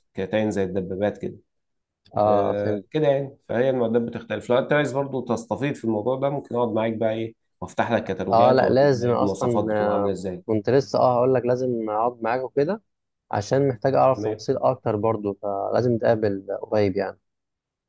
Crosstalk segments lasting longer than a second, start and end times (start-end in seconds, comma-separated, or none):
8.3-10.4